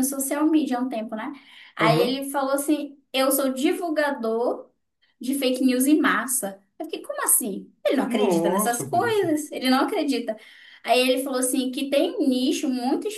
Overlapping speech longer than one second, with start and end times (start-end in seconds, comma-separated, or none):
8.1-9.3